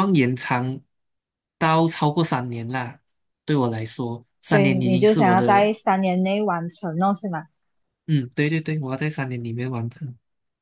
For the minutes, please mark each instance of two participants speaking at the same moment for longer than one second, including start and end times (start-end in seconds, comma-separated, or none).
4.4-5.7